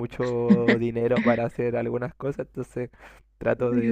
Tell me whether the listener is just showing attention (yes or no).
yes